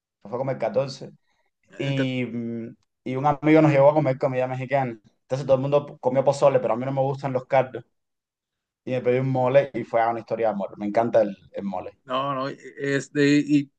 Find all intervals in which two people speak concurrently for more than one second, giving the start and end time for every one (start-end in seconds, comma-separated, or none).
none